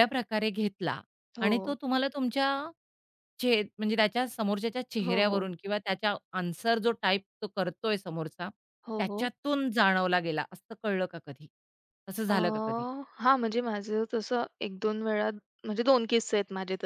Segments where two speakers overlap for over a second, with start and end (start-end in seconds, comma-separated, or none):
none